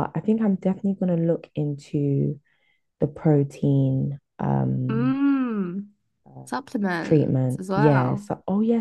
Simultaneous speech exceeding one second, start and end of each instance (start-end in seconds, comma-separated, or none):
7.0-8.3